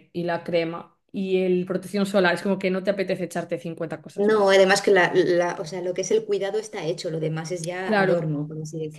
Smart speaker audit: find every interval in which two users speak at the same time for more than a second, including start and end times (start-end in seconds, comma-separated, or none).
none